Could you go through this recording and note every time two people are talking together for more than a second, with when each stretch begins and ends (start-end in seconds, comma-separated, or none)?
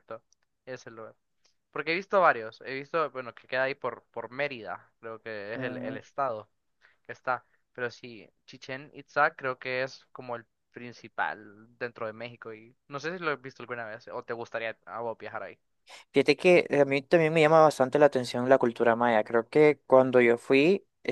none